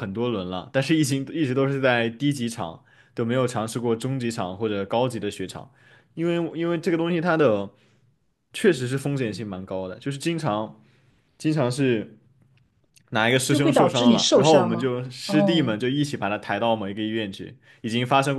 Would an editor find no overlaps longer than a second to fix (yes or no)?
no